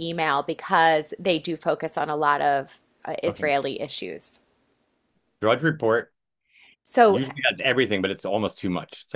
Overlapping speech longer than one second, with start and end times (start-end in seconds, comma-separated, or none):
none